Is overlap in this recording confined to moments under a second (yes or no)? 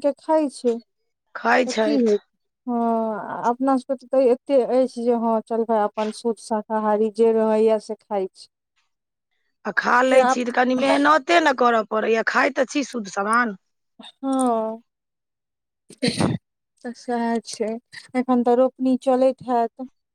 yes